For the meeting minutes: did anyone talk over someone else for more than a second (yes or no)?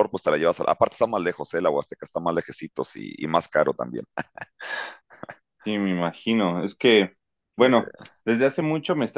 no